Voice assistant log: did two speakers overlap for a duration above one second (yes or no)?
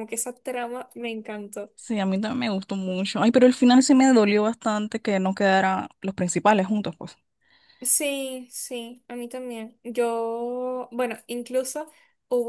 no